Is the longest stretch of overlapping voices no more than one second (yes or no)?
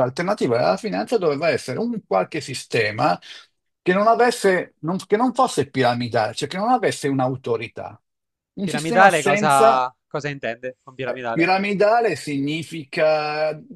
no